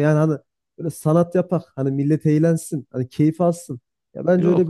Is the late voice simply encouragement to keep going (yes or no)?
yes